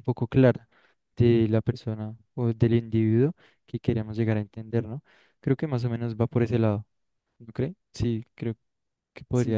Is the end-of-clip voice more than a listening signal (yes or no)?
yes